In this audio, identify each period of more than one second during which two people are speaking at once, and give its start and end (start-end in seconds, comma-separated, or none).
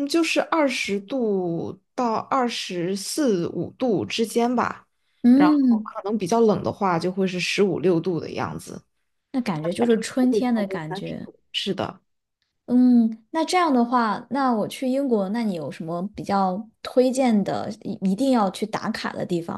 9.8-11.3